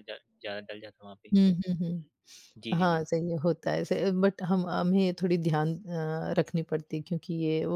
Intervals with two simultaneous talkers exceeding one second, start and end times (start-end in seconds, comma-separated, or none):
none